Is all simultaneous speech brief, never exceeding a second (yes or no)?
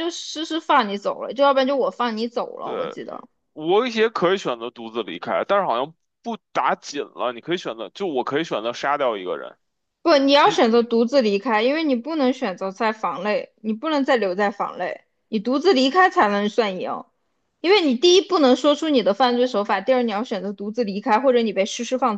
yes